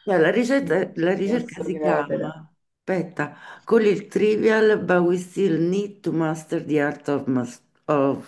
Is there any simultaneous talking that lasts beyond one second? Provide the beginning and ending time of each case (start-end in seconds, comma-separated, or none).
0.6-2.3